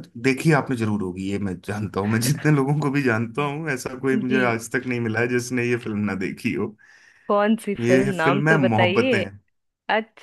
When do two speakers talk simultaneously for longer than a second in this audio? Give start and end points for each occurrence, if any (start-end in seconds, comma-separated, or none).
7.8-9.2